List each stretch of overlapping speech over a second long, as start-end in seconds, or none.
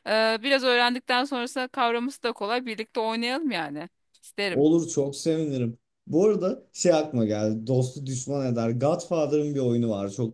none